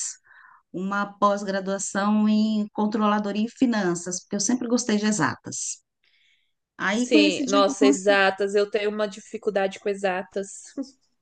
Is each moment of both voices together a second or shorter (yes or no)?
no